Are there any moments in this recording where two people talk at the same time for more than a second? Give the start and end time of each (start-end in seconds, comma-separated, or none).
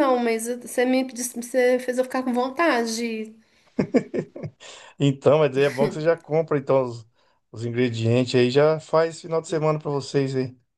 none